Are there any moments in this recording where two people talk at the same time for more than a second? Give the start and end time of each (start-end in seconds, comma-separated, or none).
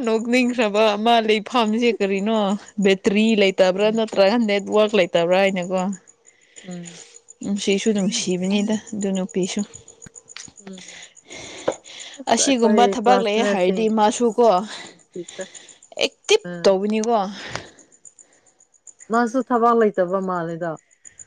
12.3-13.9